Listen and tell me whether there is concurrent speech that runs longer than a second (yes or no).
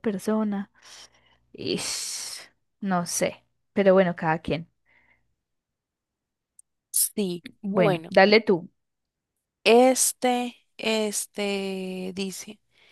no